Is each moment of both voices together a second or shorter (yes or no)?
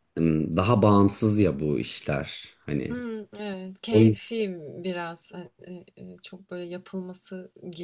yes